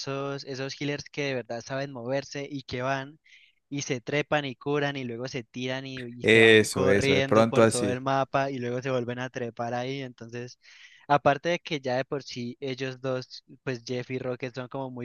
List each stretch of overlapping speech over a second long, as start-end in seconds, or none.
6.2-8.0